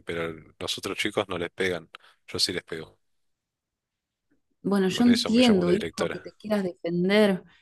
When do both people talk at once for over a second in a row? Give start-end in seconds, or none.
4.9-6.3